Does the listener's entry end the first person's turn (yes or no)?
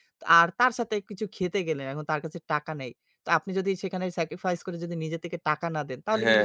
yes